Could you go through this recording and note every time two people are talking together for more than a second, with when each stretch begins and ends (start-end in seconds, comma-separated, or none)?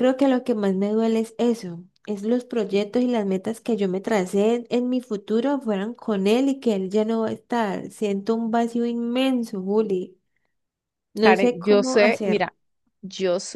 11.2-12.5